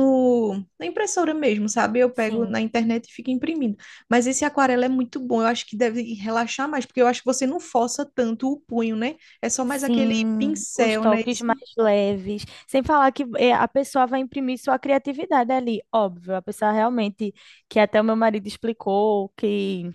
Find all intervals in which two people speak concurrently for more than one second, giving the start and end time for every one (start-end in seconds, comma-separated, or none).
9.7-11.4